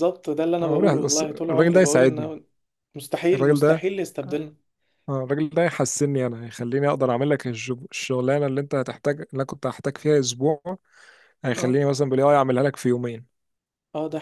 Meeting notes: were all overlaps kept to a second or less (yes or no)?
no